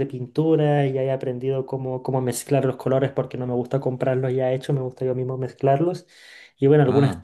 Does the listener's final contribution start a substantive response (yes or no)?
no